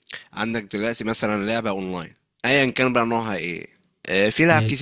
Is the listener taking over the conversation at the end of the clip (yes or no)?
no